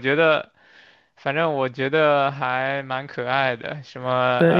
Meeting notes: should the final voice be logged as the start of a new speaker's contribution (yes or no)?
yes